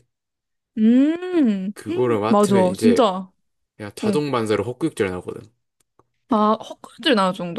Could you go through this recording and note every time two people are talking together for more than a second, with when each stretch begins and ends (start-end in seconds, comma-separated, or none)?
1.7-3.0